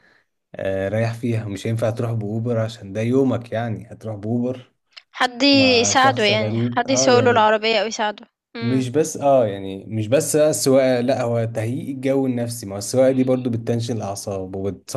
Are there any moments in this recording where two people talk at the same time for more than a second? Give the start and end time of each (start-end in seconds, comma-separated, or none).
5.8-7.5